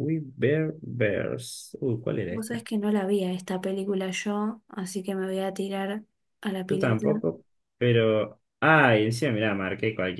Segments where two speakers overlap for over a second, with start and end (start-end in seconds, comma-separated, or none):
none